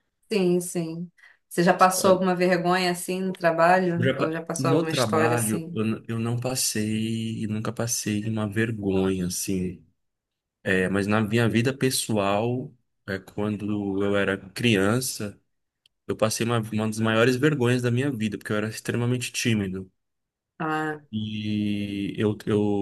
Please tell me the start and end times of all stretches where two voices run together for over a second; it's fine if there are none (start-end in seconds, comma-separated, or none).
4.0-5.8